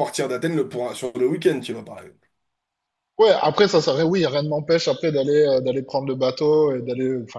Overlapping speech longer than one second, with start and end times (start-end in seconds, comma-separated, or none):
none